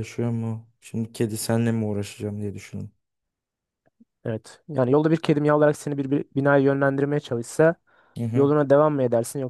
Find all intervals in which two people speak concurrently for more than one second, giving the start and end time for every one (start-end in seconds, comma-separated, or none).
none